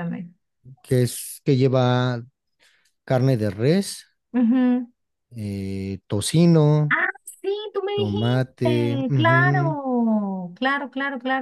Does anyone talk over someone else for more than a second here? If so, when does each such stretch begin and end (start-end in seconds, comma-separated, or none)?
7.9-9.8